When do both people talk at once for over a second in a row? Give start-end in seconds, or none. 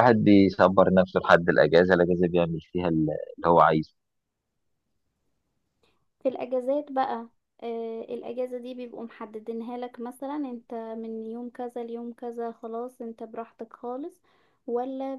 none